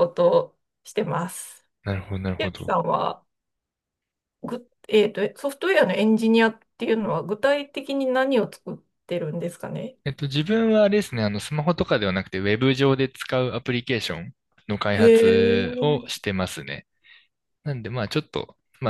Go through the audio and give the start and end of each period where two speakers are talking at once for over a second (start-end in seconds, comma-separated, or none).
14.9-16.2